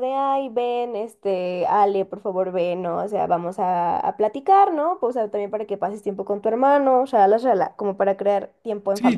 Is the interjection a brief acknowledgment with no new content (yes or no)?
no